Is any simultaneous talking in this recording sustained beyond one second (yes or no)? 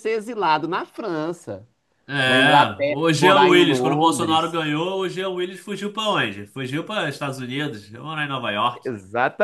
yes